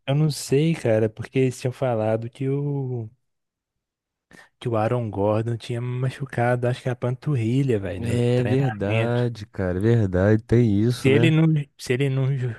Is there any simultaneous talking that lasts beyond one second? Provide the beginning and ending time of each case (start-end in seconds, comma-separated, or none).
8.0-9.2